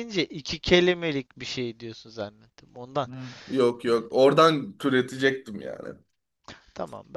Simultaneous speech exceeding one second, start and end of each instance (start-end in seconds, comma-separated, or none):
none